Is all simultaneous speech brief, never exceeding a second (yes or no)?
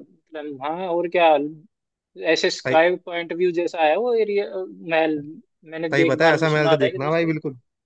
no